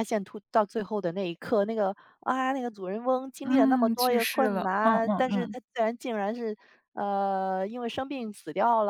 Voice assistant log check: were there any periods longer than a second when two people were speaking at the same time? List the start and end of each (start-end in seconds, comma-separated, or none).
3.4-5.6